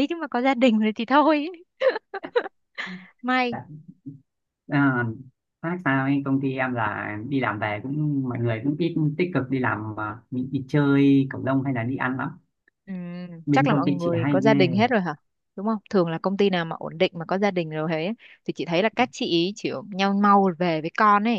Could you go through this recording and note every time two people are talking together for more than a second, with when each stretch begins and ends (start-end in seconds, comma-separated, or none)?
13.5-14.8